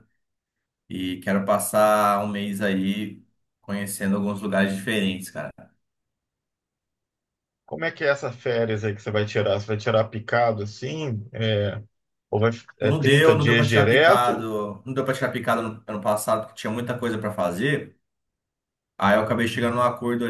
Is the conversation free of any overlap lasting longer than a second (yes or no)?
no